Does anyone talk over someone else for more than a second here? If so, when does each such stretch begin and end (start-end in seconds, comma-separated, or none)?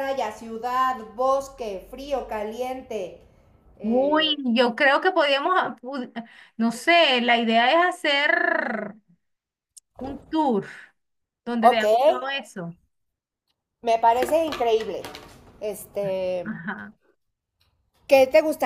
none